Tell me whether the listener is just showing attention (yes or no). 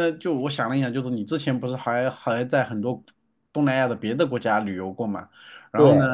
yes